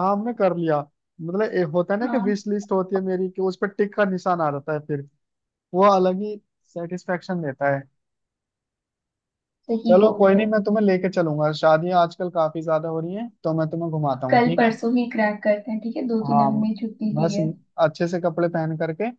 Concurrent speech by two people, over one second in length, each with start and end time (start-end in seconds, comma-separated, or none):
none